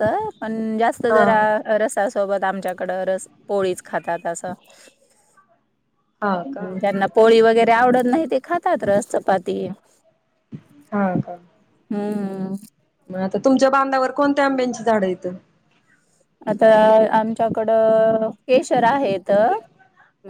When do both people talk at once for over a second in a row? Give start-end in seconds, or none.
none